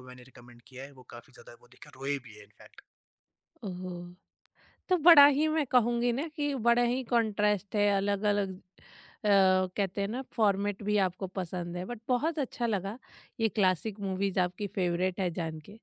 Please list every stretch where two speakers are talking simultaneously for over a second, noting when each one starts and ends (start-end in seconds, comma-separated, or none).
none